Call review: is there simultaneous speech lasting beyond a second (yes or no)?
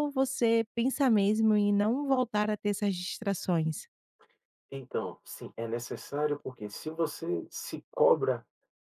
no